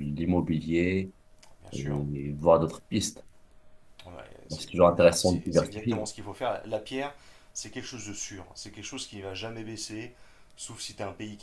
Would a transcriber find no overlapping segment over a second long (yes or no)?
no